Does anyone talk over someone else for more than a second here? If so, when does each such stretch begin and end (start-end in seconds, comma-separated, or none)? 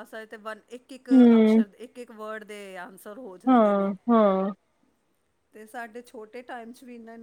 none